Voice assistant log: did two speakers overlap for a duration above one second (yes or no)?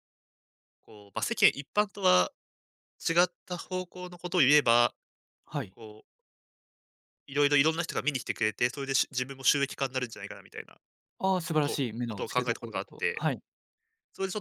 yes